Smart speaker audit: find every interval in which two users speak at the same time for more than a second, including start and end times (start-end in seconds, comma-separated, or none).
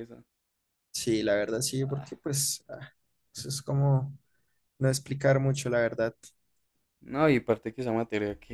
none